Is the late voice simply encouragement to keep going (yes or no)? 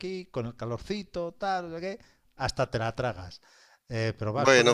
yes